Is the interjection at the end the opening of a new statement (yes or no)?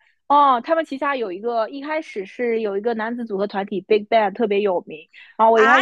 yes